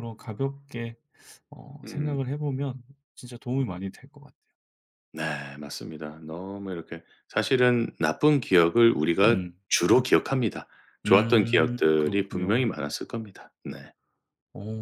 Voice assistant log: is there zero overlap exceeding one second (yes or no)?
no